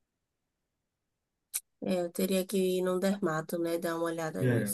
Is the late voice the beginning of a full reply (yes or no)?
yes